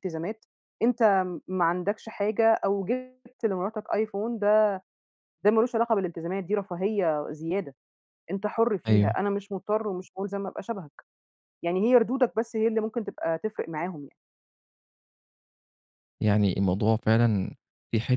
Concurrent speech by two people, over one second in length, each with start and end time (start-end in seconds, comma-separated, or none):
none